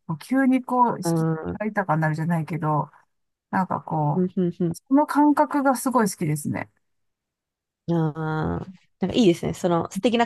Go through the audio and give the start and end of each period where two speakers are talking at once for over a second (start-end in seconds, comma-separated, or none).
none